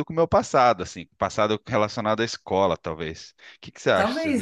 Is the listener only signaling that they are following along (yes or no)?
no